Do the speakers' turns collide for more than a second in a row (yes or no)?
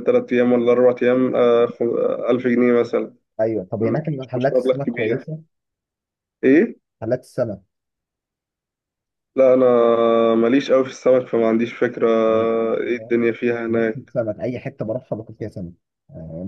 yes